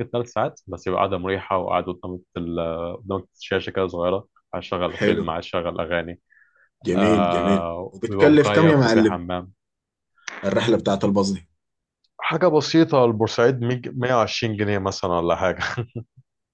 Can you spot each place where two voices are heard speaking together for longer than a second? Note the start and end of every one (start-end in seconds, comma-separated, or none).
7.0-9.2